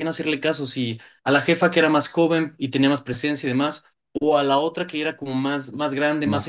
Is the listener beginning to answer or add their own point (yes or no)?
no